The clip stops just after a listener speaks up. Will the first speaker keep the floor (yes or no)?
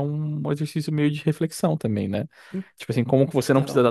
yes